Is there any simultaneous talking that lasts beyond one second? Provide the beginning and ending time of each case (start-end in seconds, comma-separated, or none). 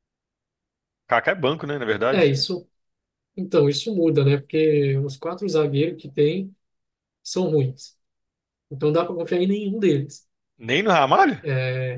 none